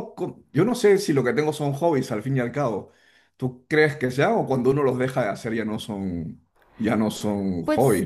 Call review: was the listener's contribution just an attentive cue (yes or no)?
no